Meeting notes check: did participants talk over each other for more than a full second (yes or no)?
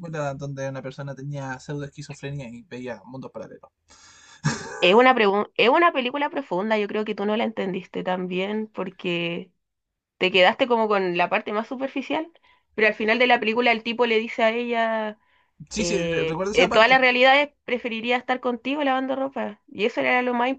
yes